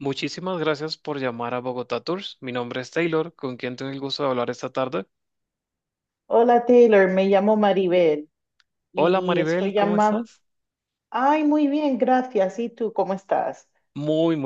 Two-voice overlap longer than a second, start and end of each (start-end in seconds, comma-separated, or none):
8.9-10.3